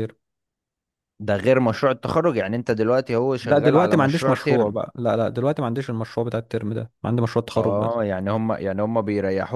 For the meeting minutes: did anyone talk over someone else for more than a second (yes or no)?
yes